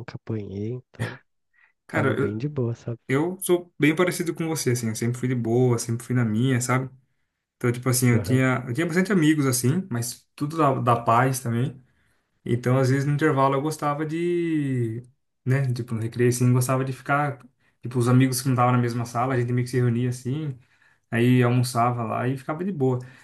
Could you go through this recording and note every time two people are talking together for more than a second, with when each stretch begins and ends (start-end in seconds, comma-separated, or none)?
none